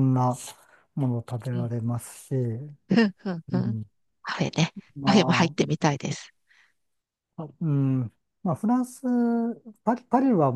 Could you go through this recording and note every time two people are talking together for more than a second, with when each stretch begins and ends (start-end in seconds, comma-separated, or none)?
none